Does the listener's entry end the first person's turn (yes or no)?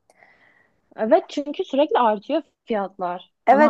yes